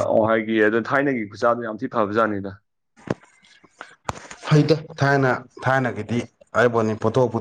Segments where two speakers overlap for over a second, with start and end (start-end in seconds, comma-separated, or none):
none